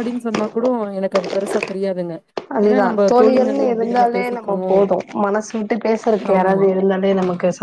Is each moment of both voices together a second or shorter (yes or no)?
no